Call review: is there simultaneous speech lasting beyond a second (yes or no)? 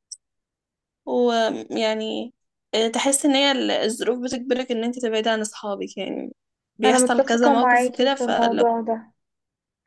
yes